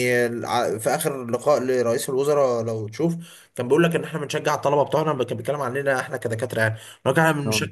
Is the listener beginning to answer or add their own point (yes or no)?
no